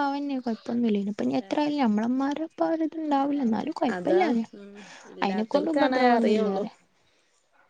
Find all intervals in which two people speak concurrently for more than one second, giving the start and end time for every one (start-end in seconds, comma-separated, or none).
5.2-6.6